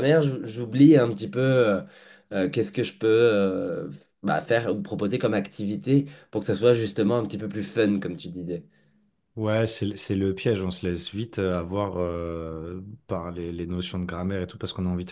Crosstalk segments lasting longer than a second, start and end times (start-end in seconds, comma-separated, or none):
none